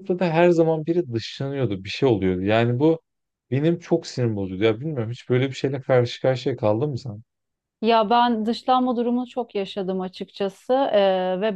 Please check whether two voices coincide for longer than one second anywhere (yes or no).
no